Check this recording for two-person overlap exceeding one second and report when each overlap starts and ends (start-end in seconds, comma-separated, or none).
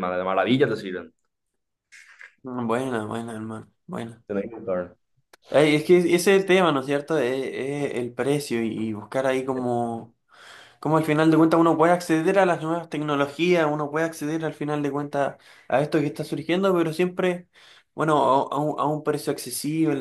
none